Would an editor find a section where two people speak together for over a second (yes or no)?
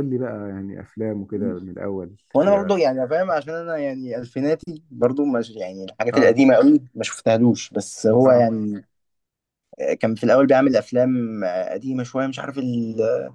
no